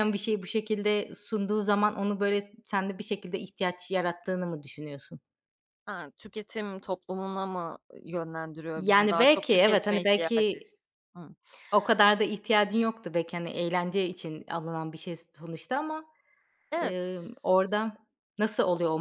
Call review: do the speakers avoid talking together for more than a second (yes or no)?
no